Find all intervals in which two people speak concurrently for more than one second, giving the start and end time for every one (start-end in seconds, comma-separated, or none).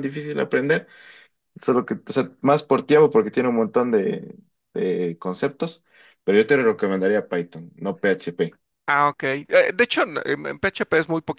none